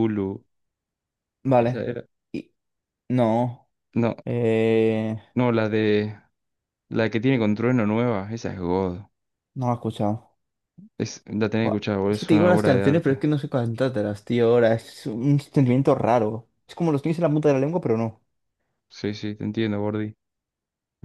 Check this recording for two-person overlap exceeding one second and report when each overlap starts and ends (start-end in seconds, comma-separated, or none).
11.6-13.2